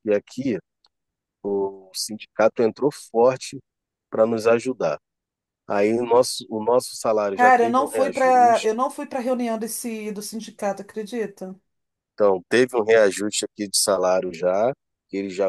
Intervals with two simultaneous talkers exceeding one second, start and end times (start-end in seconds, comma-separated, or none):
7.3-8.7